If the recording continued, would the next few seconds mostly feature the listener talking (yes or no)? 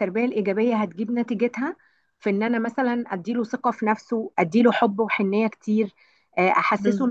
no